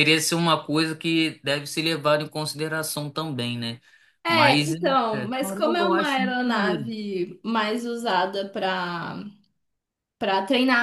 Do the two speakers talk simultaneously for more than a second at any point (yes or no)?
yes